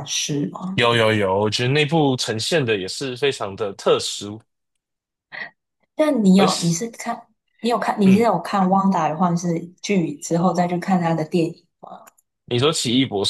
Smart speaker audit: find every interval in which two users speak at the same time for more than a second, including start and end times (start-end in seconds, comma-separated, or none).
none